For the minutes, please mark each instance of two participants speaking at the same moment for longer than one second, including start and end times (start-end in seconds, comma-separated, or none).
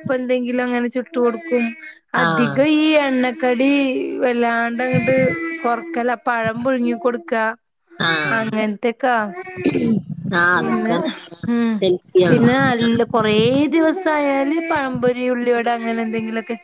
none